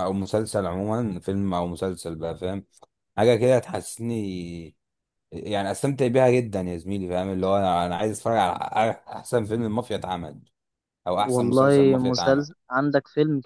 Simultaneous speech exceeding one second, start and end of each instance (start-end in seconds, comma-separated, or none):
11.2-12.5